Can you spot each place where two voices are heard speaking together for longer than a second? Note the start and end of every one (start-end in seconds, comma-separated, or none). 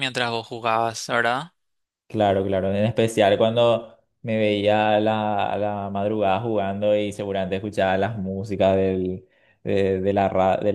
none